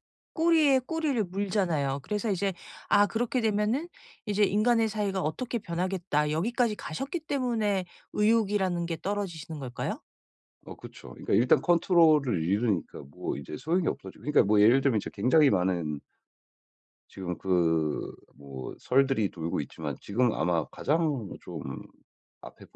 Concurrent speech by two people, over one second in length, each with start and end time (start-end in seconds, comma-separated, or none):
none